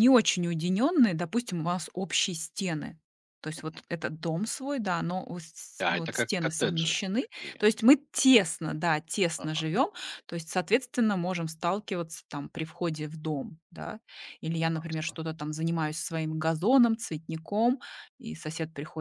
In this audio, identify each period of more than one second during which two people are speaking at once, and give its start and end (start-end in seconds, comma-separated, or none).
5.8-7.6